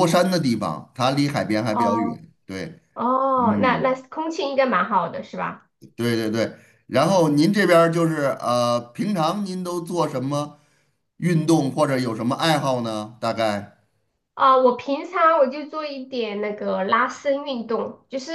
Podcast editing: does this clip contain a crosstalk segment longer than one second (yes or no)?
no